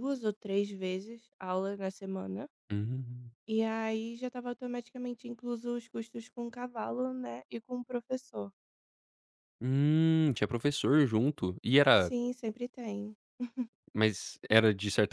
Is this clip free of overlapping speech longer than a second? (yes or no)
yes